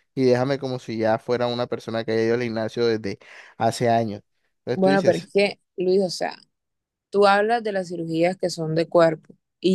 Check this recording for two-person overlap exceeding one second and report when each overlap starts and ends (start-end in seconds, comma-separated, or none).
none